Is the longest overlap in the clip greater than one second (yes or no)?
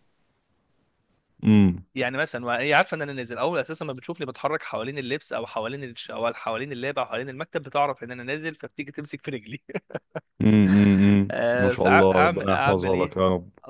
yes